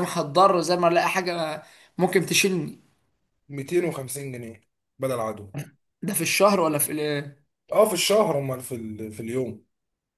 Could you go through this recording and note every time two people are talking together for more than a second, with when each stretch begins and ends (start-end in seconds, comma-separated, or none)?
none